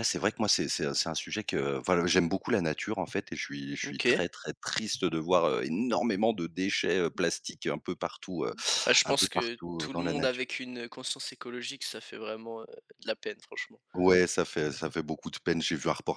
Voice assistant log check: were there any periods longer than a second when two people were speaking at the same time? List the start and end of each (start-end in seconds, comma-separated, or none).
9.0-10.5